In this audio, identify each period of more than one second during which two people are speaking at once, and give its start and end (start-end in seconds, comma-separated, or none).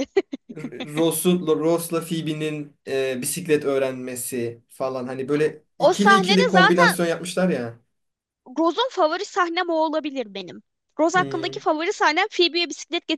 5.8-7.0